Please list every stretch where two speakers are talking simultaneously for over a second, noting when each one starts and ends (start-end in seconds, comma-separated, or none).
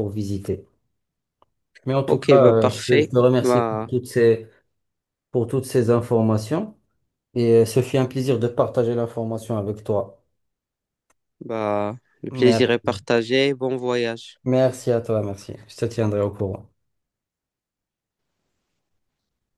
2.0-3.9